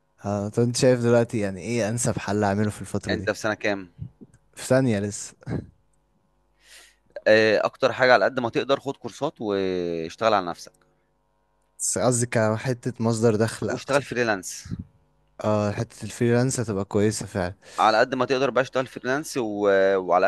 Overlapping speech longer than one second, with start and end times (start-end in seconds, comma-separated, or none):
none